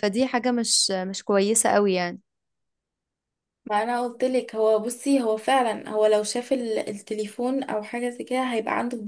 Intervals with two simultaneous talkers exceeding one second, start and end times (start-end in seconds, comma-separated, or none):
none